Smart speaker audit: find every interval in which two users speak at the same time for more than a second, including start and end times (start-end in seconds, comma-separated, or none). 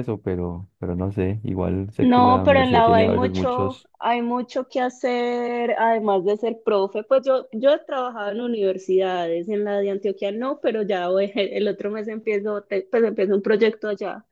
2.0-3.9